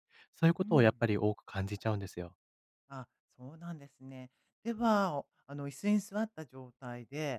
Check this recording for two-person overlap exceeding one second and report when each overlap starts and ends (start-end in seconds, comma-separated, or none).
none